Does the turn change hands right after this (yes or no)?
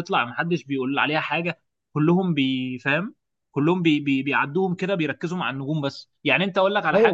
yes